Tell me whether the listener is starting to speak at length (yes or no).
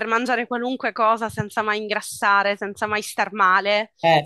no